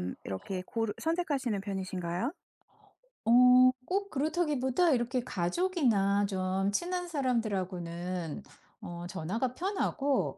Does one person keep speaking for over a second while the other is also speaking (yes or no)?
no